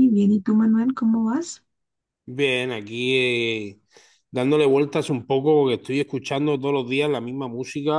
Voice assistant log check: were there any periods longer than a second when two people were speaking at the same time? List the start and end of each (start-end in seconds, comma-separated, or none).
none